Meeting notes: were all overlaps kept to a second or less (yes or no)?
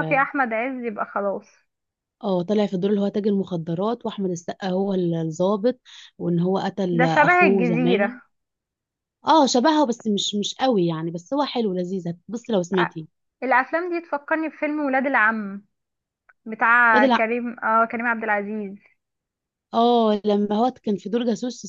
no